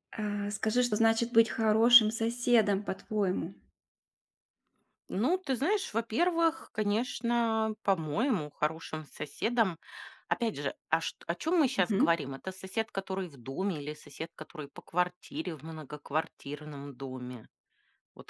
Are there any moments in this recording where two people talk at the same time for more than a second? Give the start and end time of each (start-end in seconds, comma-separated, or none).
none